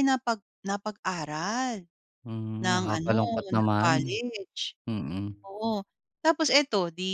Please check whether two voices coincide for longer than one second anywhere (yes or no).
yes